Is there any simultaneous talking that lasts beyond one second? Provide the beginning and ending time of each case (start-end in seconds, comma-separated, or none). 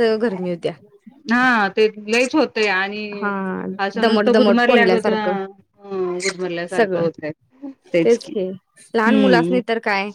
4.0-5.3